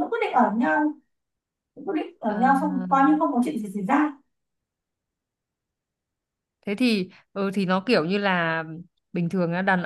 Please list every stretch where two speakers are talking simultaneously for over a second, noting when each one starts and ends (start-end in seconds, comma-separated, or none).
none